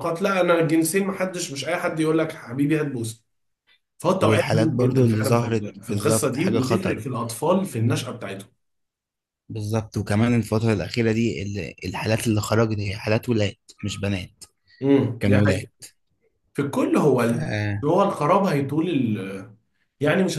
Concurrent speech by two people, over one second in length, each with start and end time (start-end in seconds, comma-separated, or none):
4.2-7.0